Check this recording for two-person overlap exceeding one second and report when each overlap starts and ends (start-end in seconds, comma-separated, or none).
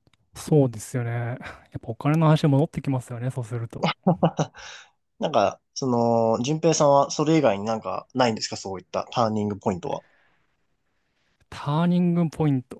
none